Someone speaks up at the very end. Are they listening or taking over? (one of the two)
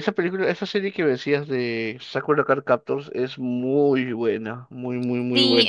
taking over